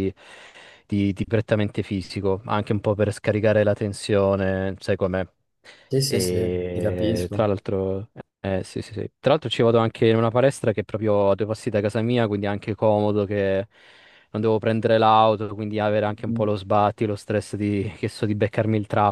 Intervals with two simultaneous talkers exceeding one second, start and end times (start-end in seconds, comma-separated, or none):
6.0-7.5